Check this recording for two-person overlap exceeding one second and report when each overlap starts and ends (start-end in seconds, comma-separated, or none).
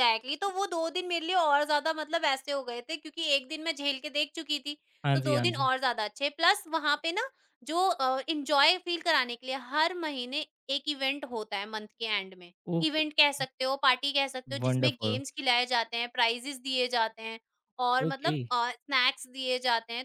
none